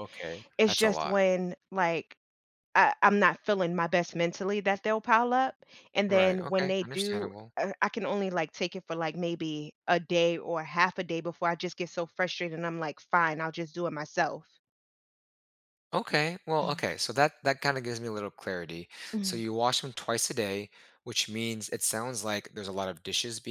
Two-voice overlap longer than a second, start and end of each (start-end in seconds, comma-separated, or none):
6.1-7.5